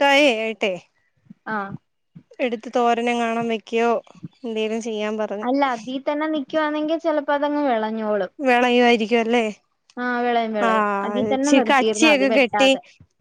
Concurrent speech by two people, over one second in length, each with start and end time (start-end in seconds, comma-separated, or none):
10.7-12.7